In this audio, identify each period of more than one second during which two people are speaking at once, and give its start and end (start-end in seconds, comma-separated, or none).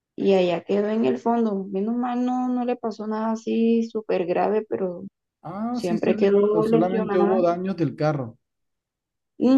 5.7-7.4